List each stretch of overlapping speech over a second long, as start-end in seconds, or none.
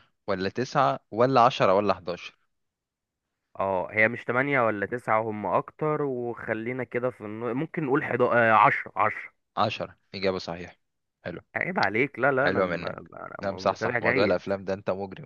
12.4-14.4